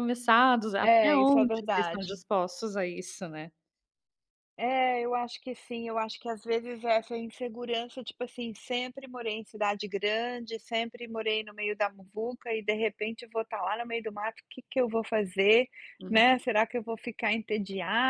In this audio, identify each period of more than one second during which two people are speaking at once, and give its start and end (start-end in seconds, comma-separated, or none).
0.8-2.2